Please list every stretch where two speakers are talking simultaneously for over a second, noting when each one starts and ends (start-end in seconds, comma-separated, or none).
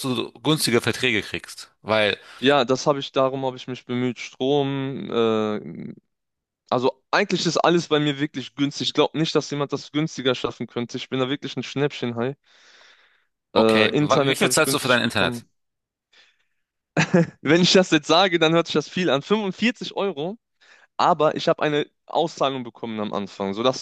13.6-15.4